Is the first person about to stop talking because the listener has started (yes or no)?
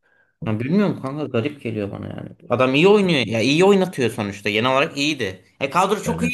no